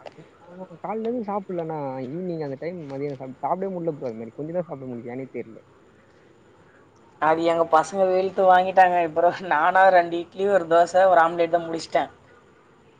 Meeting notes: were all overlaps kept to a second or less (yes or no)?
yes